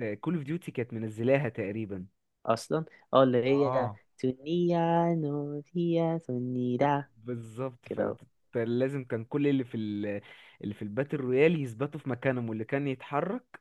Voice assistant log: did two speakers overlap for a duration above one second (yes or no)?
no